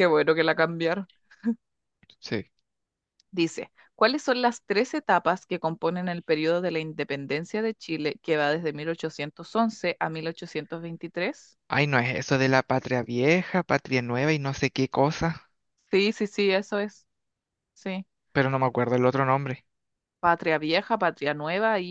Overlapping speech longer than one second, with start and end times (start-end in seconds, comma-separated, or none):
none